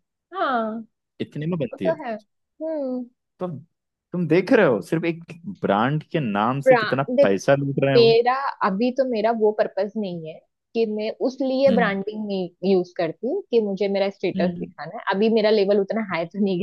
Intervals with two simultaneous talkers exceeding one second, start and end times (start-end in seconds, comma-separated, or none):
none